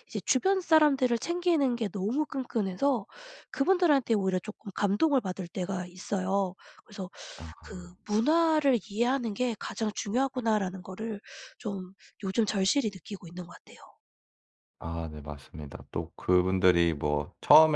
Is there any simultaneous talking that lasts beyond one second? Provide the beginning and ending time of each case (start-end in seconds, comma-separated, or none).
none